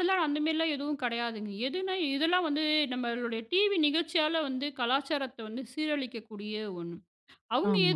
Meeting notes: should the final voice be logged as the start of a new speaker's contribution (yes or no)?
yes